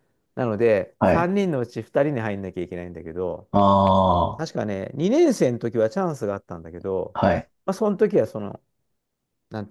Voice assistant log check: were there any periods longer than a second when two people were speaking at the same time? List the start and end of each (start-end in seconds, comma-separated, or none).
none